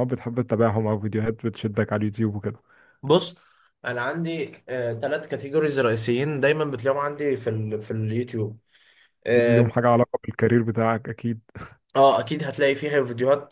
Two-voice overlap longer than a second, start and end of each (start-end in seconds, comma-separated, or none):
none